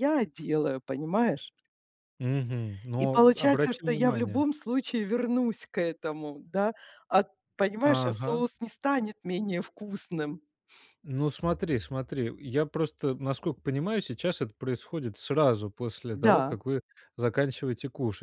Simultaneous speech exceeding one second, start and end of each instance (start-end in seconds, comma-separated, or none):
3.0-4.4